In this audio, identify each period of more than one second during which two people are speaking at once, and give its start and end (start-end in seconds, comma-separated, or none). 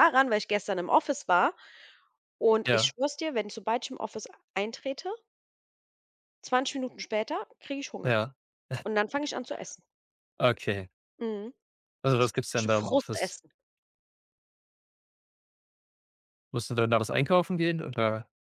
12.2-13.4